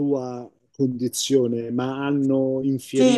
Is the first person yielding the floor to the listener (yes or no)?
yes